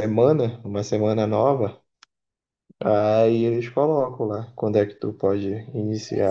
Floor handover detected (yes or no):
yes